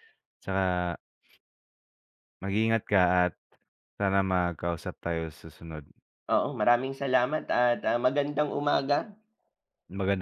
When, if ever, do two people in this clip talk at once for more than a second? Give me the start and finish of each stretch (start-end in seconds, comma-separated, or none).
none